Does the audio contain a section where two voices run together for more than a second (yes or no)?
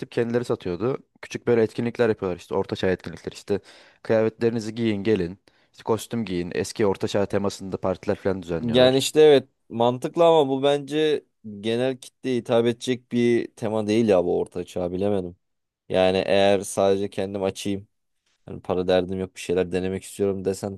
no